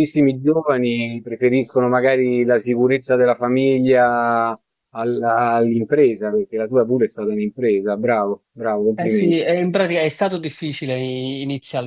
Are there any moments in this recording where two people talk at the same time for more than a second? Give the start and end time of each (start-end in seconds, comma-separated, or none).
none